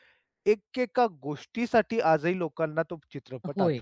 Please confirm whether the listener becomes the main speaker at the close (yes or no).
yes